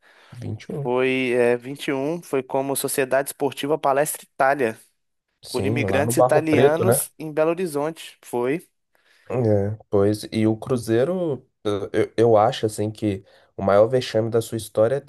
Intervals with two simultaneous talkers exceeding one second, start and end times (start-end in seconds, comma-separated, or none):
5.5-7.0